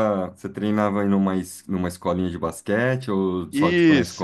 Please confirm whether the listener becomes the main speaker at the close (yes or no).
yes